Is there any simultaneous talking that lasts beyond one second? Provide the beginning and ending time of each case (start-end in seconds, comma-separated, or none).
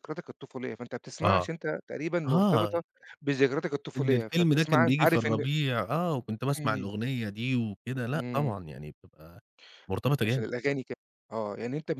4.0-5.5